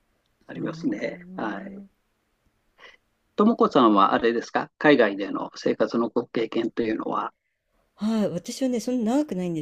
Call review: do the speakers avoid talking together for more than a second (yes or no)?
no